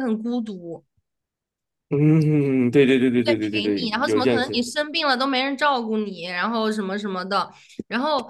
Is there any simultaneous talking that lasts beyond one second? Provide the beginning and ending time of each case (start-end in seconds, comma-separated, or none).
3.2-4.7